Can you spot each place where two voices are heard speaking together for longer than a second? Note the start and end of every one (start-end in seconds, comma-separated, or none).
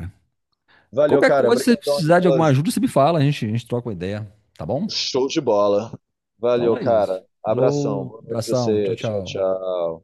1.1-2.6, 6.5-9.5